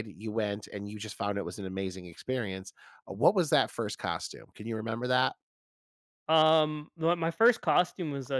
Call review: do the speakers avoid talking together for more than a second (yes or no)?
yes